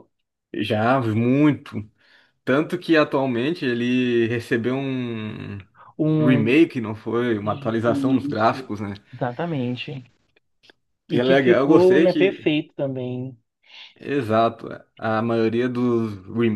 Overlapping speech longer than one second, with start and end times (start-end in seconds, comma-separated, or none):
7.4-8.7, 11.1-12.5